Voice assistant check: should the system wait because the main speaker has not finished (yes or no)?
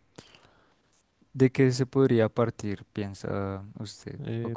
no